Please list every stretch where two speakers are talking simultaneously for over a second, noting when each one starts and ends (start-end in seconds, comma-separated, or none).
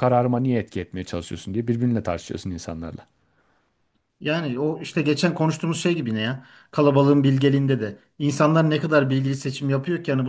none